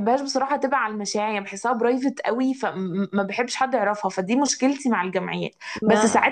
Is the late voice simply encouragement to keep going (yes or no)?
yes